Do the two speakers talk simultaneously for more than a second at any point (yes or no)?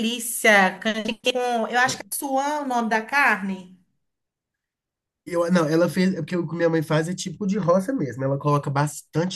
no